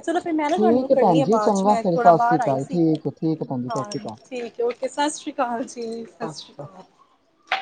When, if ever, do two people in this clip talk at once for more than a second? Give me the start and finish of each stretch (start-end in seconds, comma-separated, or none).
0.6-2.8